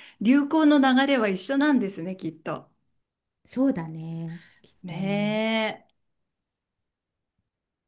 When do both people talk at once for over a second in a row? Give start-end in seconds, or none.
none